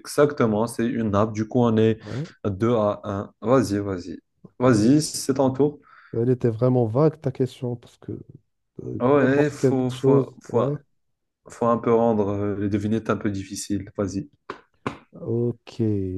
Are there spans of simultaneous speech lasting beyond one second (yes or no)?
yes